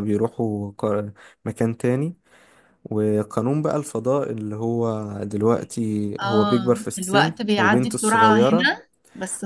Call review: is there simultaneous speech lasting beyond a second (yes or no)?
yes